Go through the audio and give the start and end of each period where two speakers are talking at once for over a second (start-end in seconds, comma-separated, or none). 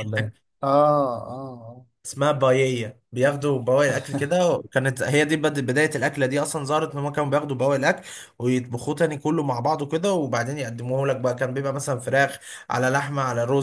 none